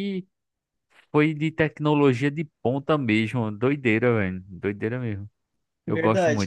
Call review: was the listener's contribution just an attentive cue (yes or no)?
no